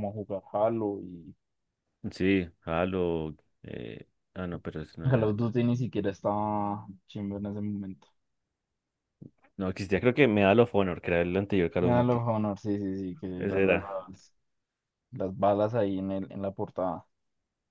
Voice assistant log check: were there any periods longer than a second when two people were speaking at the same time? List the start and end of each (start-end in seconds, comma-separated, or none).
none